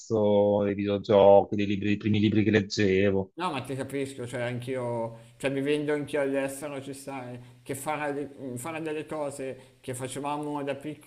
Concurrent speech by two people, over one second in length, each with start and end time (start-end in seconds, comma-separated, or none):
none